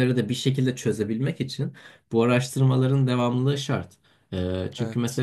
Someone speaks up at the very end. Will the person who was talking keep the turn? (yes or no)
yes